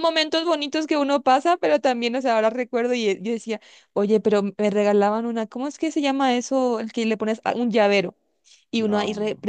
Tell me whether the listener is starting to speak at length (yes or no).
no